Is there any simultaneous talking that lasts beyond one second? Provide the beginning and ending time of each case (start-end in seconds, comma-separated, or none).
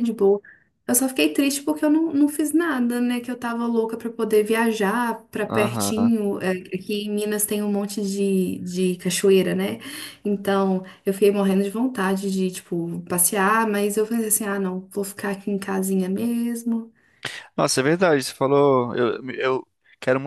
none